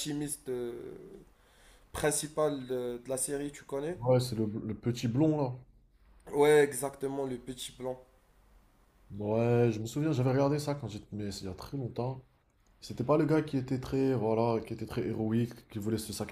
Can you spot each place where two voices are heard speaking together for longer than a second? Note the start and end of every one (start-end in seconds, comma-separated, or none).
none